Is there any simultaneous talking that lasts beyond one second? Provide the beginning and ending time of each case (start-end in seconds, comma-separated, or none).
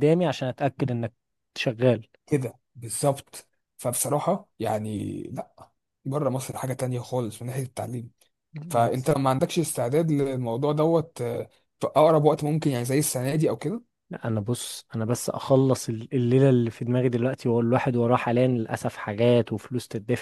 none